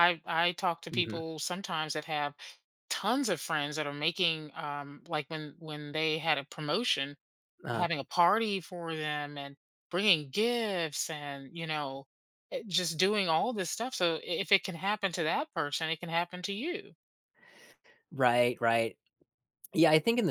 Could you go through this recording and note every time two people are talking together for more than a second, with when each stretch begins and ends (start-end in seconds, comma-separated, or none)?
none